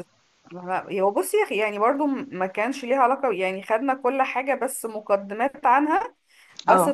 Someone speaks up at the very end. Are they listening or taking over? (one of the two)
listening